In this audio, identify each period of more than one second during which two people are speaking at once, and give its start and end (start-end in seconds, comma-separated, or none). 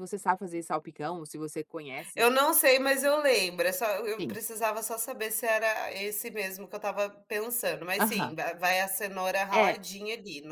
none